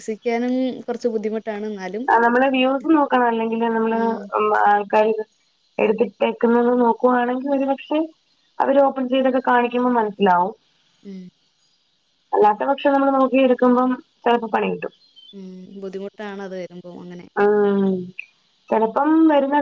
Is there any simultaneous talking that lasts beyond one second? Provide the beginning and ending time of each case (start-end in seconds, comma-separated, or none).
none